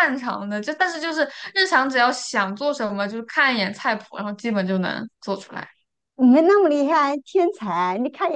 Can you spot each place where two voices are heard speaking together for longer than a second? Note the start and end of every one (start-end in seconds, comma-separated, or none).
none